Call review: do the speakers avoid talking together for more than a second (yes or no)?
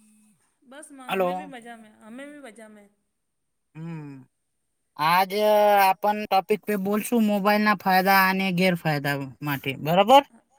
yes